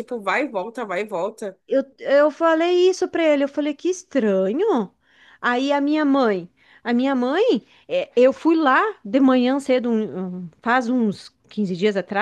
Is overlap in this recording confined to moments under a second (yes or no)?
yes